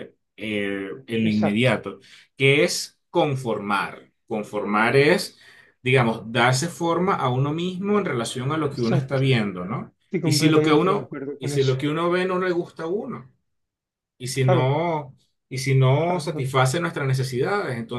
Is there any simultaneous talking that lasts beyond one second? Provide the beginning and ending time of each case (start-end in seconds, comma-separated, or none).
10.0-11.8